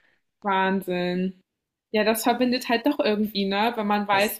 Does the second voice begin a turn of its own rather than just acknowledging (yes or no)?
no